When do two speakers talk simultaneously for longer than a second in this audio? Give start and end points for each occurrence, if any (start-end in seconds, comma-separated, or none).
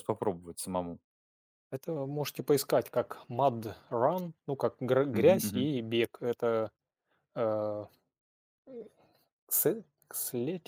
none